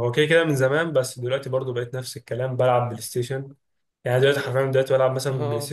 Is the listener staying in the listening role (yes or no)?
yes